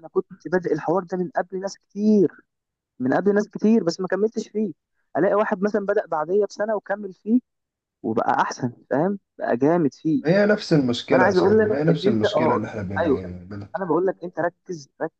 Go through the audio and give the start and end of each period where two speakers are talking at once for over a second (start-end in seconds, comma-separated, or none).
11.1-13.0